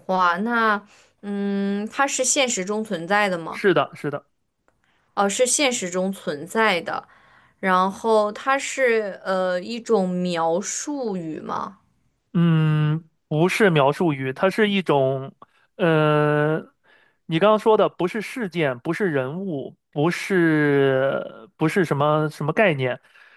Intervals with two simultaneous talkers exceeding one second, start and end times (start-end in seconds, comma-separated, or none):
none